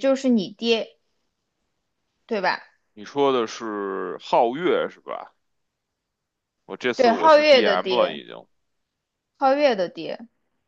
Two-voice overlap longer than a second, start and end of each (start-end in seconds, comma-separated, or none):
7.0-8.2